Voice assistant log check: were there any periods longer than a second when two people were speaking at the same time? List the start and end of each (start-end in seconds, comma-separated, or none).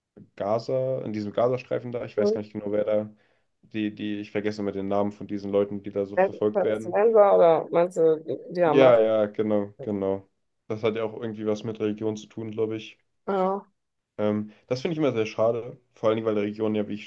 none